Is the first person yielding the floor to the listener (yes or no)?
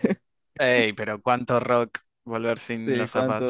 yes